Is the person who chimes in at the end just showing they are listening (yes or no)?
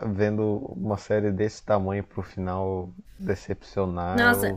no